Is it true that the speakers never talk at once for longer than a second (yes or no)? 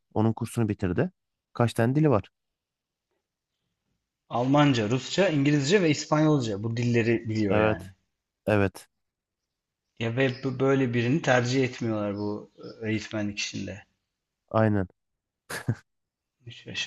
yes